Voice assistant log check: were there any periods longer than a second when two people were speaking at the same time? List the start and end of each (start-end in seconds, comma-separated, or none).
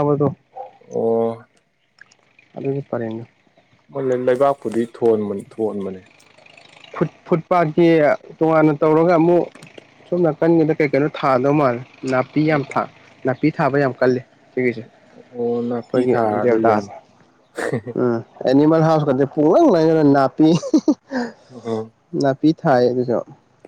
15.3-16.9